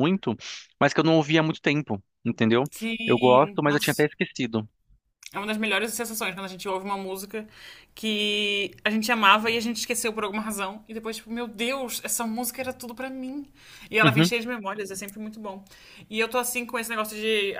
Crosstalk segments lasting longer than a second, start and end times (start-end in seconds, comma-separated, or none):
2.7-4.1